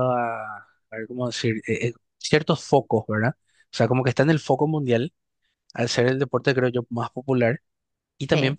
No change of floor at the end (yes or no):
yes